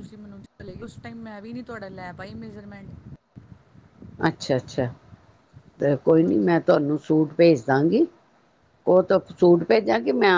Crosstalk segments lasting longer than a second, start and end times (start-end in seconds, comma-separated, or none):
none